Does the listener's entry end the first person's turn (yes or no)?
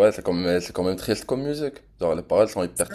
yes